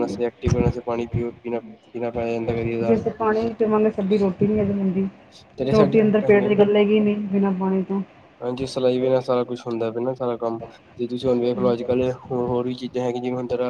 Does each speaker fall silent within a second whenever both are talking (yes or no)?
yes